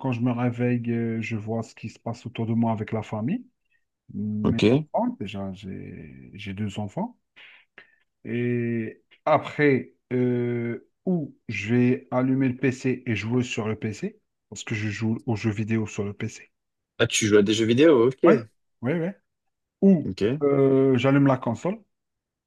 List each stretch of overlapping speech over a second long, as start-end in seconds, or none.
none